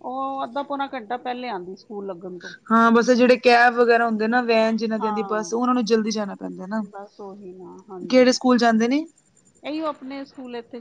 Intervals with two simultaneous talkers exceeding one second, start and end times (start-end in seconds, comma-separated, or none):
none